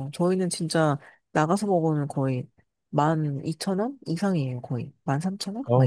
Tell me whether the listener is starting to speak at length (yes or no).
yes